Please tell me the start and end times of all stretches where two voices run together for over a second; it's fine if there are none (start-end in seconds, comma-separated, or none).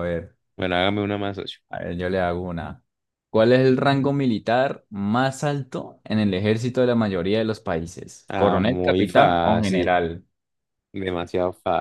8.3-9.9